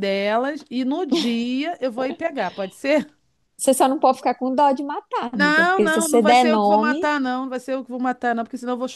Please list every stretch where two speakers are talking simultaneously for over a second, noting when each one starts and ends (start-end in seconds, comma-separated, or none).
5.3-7.0